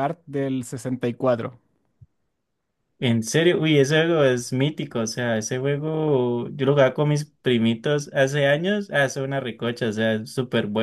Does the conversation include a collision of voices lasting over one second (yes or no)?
no